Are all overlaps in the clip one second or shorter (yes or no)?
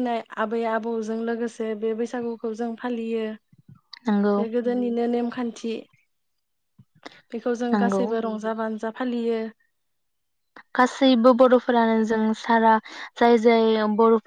yes